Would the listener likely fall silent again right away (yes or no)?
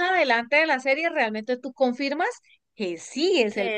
no